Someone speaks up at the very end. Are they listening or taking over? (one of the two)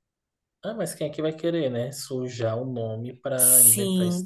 taking over